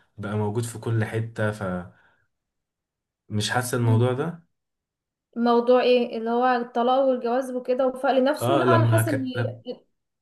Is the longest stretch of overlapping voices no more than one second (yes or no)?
no